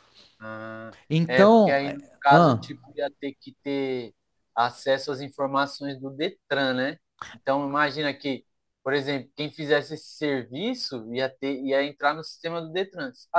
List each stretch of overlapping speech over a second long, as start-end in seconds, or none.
1.1-2.7